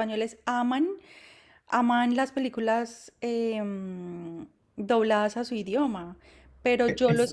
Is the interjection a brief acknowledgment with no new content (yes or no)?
yes